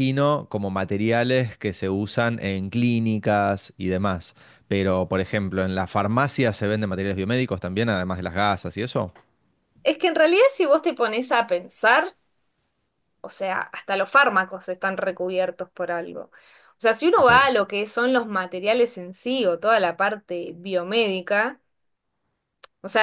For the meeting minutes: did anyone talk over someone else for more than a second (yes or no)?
no